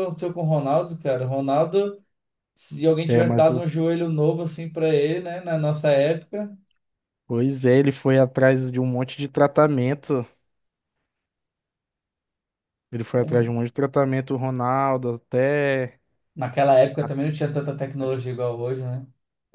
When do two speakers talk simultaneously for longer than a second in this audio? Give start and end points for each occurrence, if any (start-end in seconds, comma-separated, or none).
none